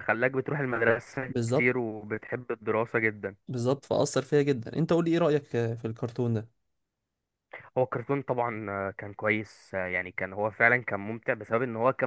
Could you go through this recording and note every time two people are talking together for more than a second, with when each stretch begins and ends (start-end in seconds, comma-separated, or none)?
none